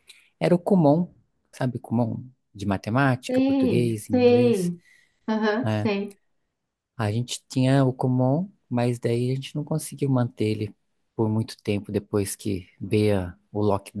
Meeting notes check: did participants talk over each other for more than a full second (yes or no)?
yes